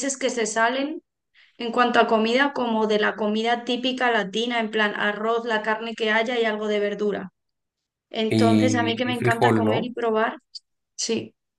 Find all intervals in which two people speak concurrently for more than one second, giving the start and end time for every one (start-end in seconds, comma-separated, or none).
8.3-9.9